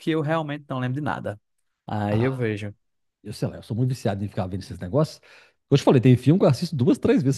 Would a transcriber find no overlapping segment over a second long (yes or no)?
yes